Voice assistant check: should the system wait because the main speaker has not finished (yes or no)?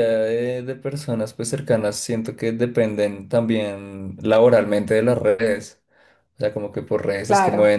yes